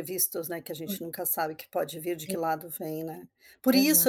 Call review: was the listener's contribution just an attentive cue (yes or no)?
yes